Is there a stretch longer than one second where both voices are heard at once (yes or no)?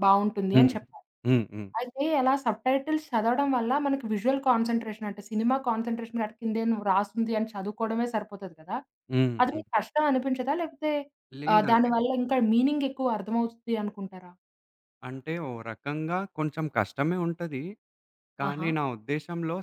no